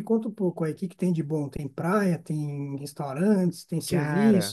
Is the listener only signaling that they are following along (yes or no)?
no